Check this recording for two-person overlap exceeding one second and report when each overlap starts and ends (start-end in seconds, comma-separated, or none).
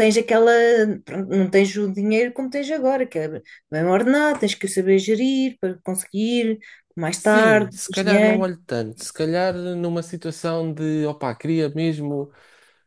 7.1-8.5